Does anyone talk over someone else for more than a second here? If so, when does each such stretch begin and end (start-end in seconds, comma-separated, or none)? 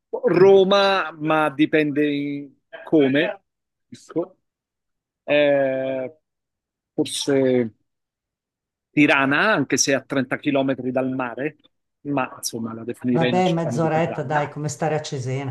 13.1-14.5